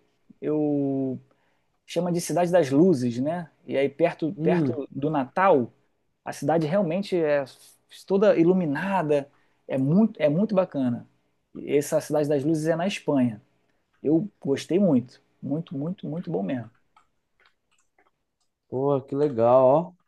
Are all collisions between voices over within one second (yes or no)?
yes